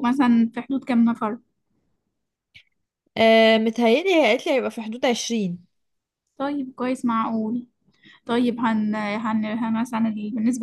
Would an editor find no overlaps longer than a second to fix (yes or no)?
yes